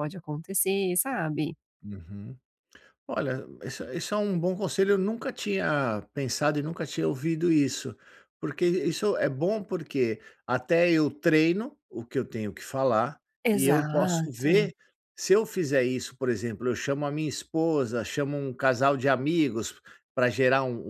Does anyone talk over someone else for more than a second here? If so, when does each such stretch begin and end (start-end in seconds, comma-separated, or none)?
13.4-14.7